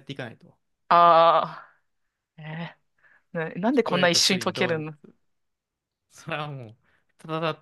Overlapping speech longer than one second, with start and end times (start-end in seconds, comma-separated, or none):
3.7-5.0